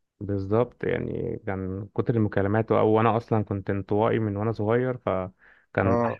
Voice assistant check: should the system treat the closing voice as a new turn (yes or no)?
no